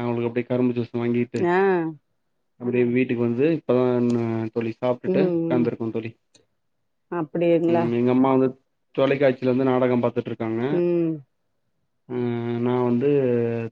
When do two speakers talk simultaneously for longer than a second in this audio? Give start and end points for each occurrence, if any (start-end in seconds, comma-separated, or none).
none